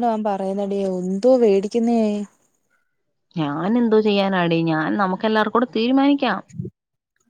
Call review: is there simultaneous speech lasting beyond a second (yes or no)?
no